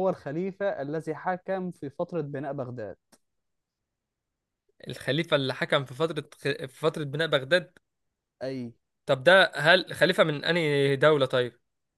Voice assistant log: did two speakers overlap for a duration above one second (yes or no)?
no